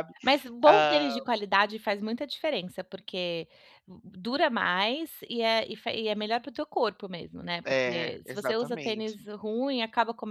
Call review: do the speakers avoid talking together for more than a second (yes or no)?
no